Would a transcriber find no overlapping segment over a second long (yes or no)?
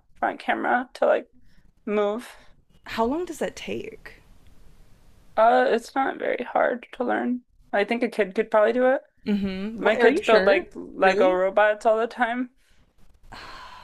no